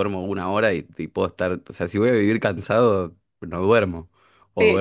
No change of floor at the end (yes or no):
no